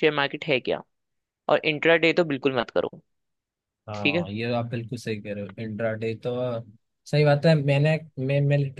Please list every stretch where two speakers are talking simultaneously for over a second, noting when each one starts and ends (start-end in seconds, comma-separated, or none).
none